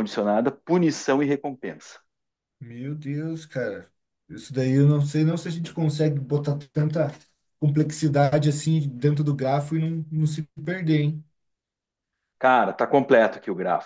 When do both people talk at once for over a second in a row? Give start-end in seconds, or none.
none